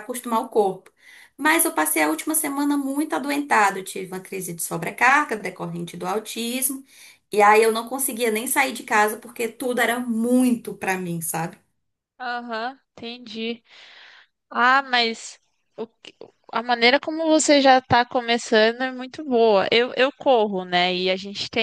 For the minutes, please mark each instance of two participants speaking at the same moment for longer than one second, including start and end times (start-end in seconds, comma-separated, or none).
none